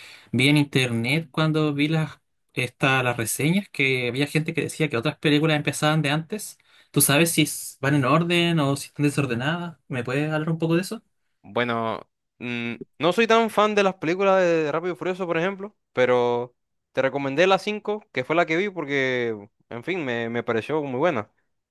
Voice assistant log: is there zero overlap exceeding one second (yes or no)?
yes